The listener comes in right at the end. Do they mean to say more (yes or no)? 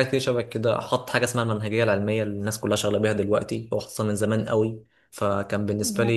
no